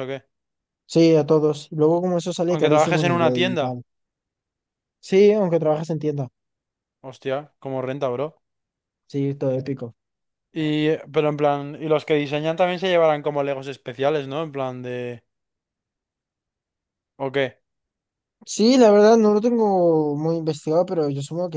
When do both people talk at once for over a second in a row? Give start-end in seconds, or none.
2.5-3.8